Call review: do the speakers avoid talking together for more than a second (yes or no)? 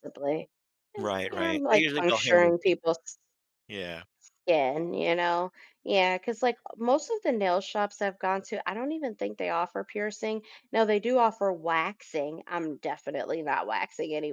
no